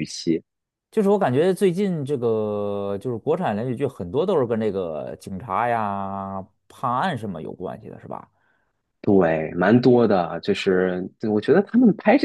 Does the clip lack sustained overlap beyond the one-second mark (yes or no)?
yes